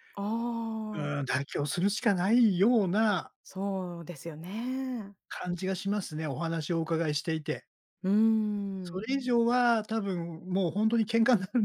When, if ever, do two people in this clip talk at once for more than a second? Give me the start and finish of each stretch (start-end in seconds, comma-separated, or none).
none